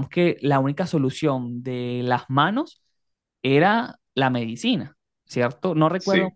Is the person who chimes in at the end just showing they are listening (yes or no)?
yes